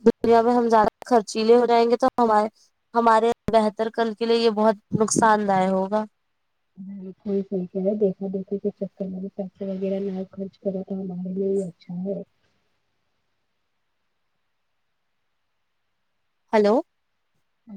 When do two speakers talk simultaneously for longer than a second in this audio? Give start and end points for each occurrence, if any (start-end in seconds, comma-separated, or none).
none